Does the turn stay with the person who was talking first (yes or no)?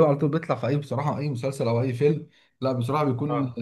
yes